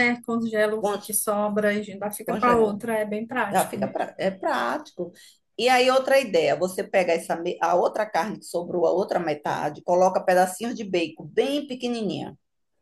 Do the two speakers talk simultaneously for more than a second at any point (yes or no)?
no